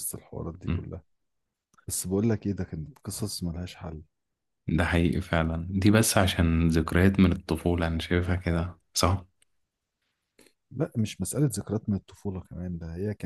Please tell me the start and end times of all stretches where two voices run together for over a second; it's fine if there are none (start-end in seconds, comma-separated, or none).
none